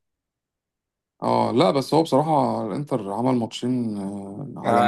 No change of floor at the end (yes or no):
no